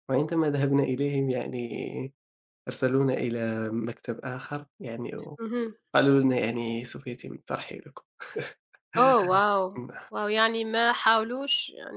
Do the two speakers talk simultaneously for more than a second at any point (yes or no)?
no